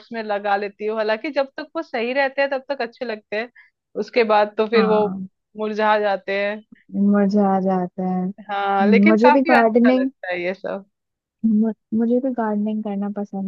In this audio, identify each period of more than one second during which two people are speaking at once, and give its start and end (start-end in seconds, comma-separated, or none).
8.5-10.1